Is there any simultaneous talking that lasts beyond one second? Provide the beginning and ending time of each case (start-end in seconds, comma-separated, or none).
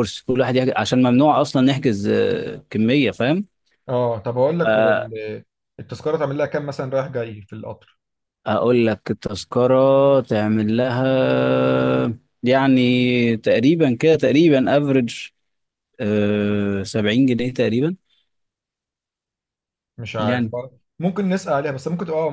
none